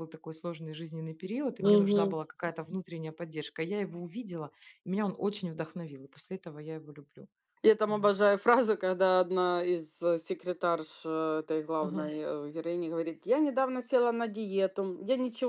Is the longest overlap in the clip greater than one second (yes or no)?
no